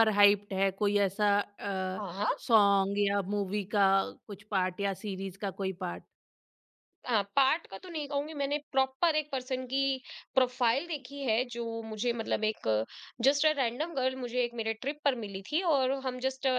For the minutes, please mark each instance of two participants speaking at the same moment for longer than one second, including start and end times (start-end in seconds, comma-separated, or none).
none